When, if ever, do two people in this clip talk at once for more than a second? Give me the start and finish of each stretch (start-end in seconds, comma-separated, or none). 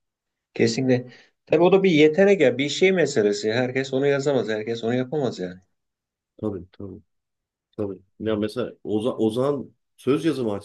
none